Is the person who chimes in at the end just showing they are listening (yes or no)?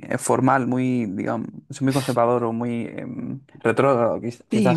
no